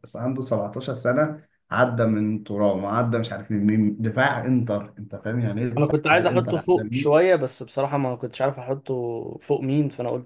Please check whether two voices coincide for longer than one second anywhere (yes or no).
yes